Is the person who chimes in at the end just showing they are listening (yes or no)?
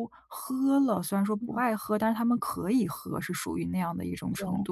yes